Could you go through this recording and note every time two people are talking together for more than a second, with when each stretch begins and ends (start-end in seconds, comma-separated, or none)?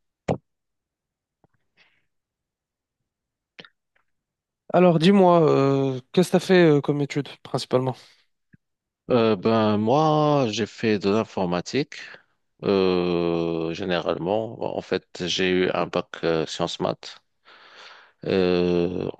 none